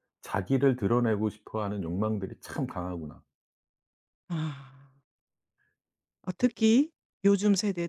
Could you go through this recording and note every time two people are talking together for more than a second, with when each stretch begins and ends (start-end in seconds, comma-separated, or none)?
none